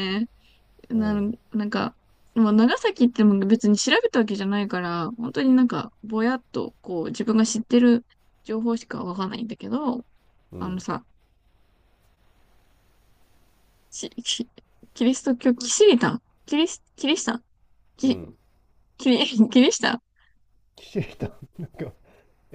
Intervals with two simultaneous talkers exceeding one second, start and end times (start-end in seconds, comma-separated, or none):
none